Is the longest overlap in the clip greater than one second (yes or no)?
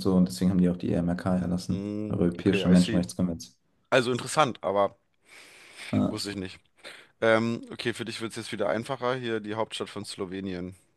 yes